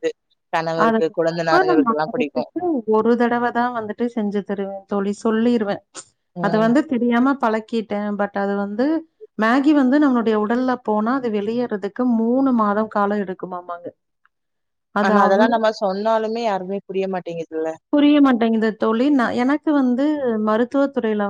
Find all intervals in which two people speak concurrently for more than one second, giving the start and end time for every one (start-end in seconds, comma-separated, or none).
0.8-2.4